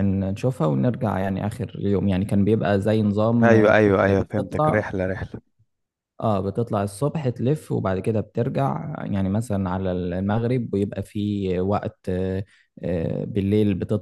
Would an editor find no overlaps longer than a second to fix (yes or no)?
no